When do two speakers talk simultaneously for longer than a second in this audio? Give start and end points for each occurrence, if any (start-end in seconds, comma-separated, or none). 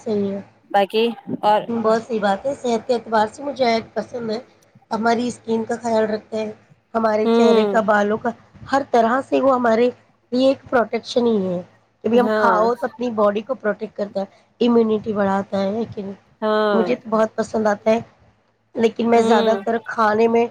none